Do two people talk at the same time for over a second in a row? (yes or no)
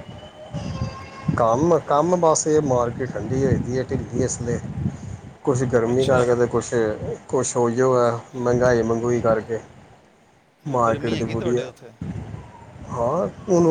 yes